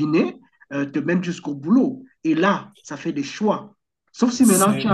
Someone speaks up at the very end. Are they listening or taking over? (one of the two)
listening